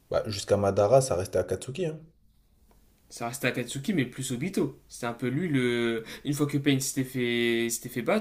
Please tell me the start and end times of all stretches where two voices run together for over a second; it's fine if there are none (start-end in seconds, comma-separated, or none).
none